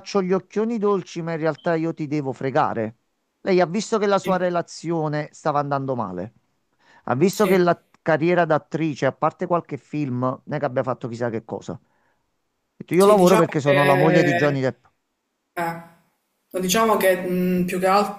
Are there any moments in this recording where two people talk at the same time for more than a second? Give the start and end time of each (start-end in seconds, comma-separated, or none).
13.0-14.6